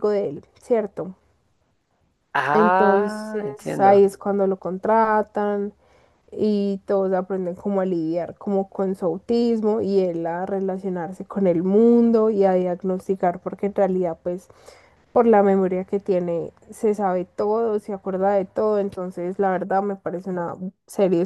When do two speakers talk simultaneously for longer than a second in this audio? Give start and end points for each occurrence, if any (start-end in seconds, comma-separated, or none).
2.5-4.0